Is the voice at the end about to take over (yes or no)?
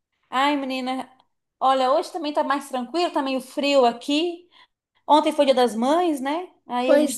no